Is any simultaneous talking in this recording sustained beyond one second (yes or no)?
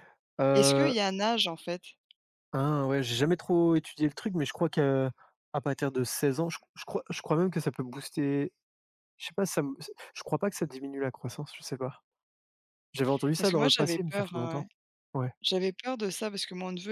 yes